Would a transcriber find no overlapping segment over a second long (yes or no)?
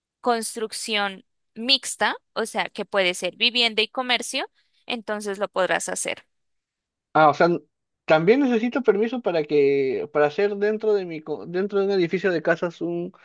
yes